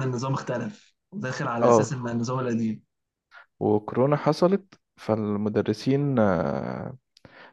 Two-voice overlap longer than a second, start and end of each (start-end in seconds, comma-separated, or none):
none